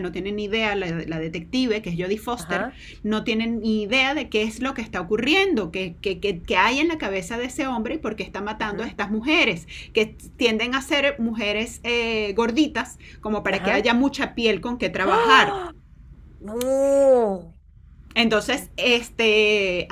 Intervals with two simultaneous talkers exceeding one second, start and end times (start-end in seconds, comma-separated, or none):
none